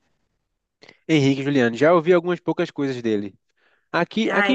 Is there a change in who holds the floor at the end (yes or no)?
no